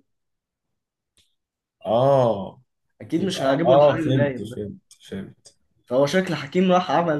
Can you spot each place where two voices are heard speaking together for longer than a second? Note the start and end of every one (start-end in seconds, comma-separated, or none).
3.2-4.6